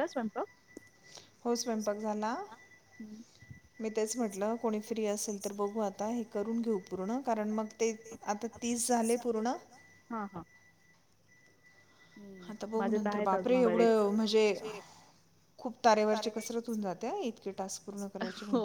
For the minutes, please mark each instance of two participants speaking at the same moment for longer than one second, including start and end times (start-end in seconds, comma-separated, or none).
12.8-14.0